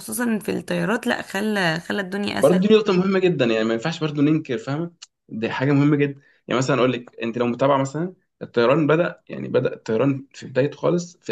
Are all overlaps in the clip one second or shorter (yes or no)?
yes